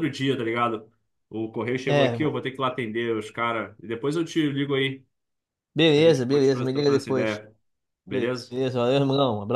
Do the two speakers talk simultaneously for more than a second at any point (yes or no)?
yes